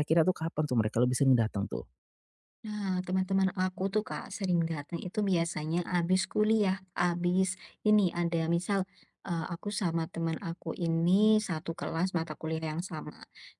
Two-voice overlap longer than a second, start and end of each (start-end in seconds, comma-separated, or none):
none